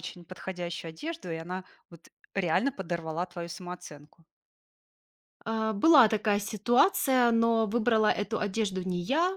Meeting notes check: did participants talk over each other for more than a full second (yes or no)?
no